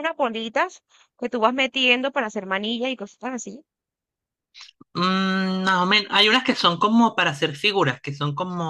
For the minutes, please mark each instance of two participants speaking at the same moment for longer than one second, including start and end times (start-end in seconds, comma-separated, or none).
none